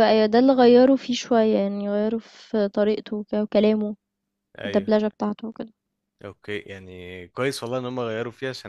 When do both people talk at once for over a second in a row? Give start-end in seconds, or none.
none